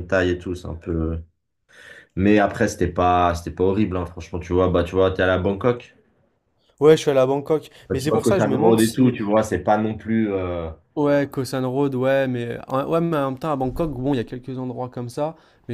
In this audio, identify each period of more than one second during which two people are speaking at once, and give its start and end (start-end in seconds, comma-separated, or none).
7.9-9.1